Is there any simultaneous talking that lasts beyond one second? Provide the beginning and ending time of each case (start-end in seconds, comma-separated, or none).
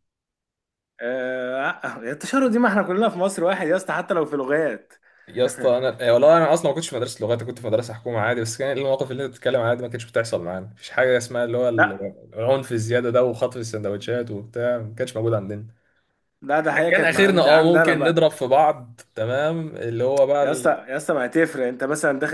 16.9-18.2